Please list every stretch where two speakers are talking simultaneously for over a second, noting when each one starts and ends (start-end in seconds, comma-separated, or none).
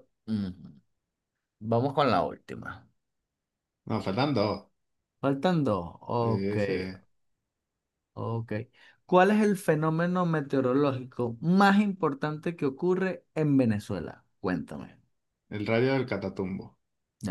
none